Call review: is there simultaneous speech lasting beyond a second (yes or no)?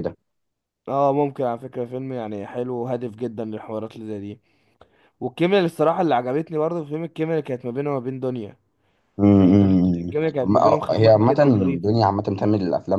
yes